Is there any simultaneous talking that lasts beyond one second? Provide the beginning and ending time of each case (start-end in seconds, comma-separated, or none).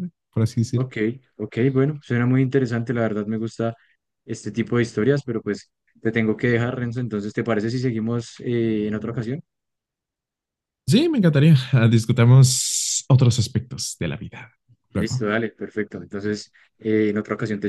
none